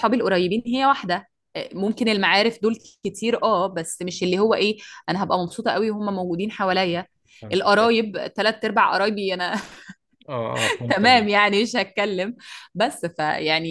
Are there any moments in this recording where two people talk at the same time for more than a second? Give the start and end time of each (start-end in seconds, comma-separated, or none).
none